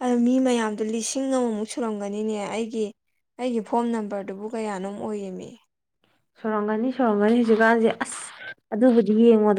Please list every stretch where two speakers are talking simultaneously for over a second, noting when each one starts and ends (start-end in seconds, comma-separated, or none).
none